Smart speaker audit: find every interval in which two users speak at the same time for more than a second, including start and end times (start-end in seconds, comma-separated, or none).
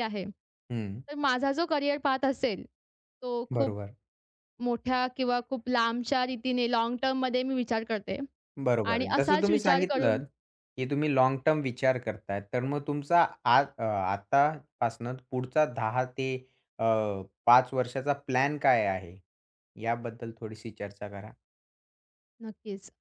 8.9-10.2